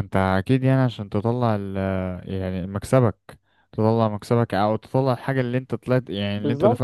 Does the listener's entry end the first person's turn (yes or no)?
yes